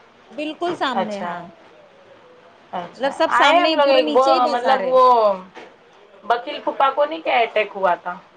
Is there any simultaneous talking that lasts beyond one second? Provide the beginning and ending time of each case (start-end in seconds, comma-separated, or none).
2.8-4.9